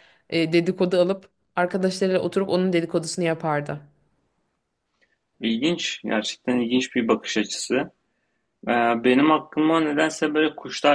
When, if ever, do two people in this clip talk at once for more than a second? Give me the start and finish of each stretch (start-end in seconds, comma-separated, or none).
none